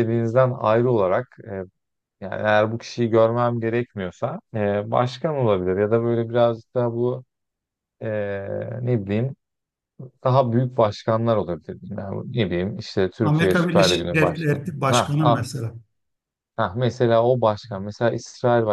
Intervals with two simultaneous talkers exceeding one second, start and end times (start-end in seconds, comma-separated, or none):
13.2-15.5